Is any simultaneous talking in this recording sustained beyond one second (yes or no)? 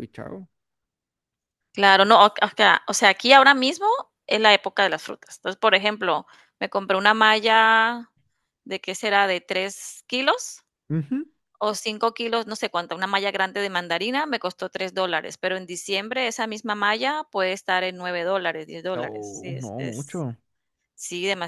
yes